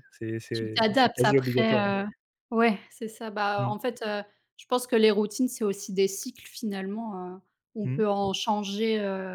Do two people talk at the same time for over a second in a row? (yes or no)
yes